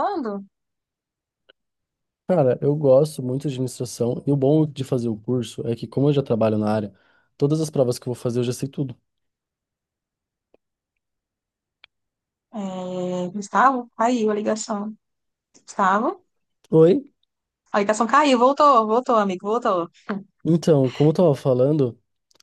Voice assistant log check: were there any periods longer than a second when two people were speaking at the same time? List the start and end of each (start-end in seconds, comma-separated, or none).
none